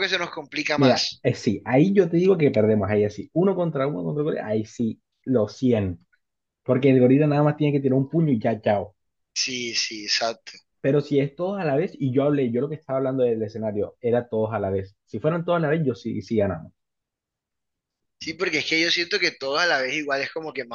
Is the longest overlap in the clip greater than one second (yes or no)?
no